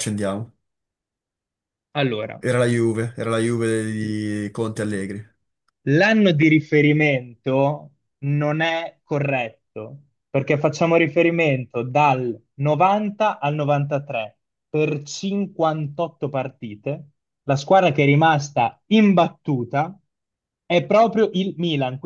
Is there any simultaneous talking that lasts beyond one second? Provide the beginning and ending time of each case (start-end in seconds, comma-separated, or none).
none